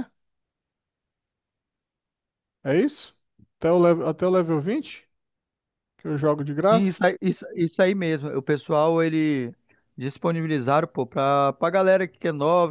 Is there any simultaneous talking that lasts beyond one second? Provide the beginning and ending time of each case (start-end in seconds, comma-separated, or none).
none